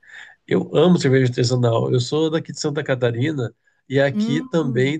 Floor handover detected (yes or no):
no